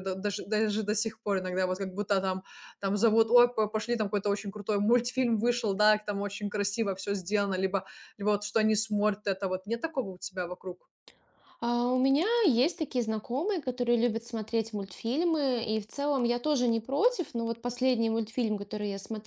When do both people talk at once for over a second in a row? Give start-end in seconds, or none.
none